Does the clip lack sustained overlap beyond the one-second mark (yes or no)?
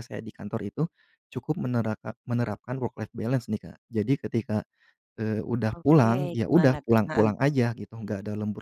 no